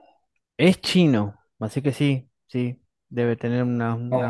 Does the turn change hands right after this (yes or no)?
yes